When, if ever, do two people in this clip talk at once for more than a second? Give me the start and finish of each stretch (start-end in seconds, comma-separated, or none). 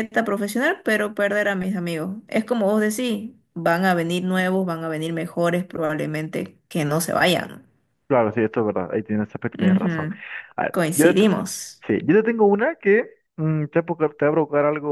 none